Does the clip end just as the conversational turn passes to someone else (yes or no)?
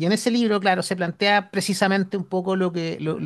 no